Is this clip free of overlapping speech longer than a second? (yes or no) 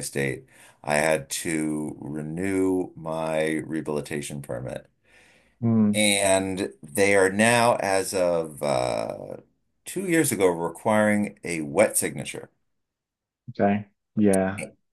yes